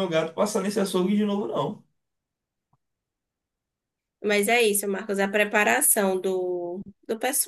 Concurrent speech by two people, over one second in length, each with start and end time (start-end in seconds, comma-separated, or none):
none